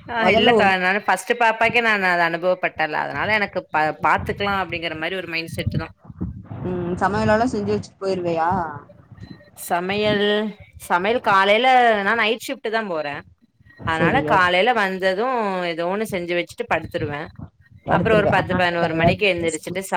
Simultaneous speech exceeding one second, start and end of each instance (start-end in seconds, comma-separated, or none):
18.0-19.5